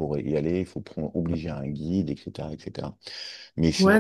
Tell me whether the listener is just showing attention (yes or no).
no